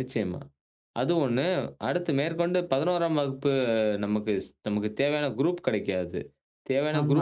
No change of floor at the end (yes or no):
yes